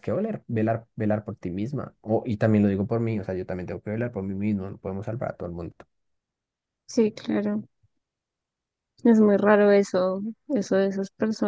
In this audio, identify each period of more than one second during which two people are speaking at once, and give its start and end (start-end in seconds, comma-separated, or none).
none